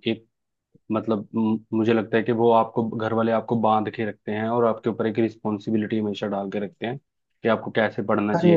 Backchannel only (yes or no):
no